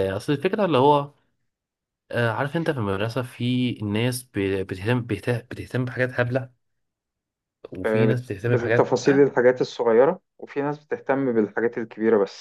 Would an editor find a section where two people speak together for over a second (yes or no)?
yes